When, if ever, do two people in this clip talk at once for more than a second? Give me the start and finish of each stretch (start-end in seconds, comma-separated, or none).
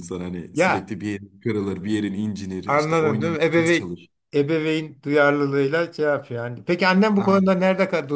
2.6-3.9